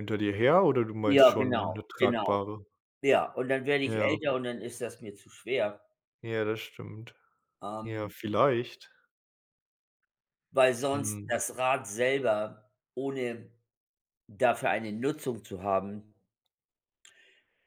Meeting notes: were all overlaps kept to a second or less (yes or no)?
no